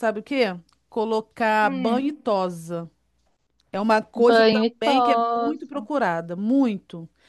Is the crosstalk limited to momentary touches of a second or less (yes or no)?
no